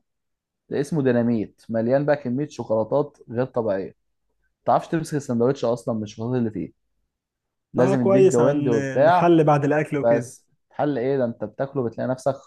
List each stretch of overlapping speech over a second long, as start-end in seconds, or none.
7.8-9.3